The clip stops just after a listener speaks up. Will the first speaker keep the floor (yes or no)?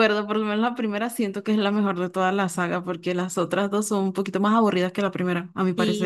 no